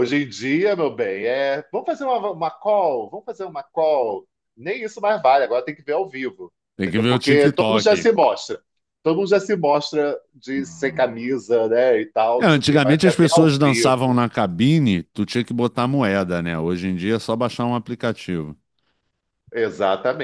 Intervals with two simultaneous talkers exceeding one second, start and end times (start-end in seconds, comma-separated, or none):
6.8-8.1, 12.4-14.2